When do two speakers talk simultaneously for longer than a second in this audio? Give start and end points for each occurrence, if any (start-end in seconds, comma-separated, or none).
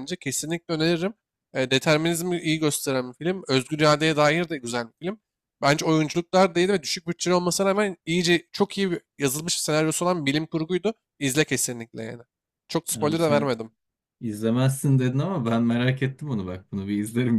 none